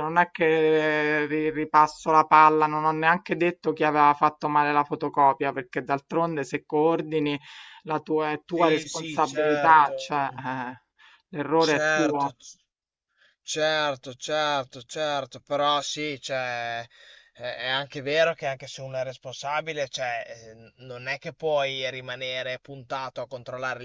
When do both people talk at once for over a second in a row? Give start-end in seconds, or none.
8.4-10.2